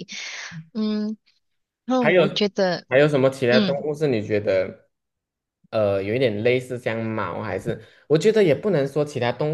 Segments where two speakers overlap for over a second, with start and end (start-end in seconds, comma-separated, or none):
none